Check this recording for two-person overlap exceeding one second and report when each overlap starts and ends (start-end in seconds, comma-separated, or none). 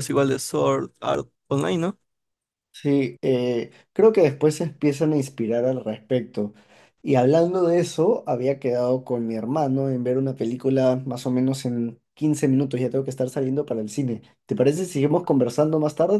none